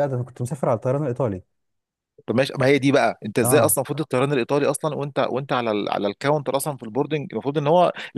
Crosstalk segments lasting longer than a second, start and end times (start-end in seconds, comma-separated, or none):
none